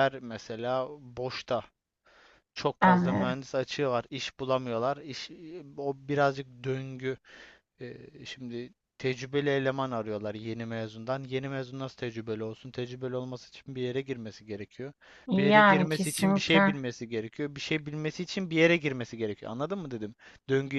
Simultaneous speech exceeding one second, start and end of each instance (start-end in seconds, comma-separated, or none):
15.4-16.8